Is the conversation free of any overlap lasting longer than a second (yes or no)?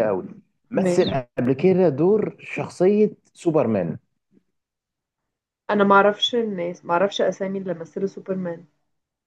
yes